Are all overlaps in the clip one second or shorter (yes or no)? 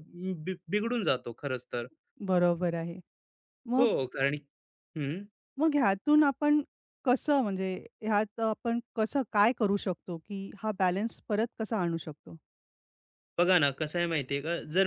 yes